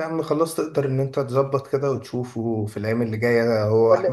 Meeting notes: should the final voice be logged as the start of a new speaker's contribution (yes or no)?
no